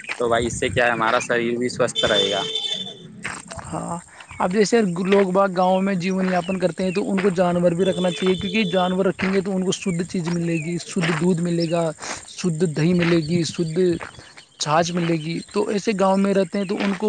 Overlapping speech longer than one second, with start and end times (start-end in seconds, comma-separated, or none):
none